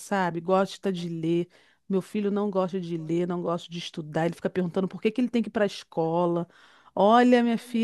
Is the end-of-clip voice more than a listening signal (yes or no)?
no